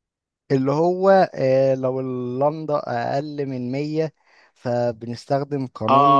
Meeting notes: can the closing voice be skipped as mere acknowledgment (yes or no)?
no